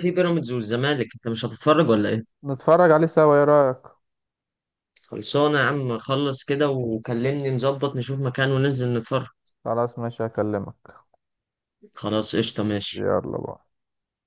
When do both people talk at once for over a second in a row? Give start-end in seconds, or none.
none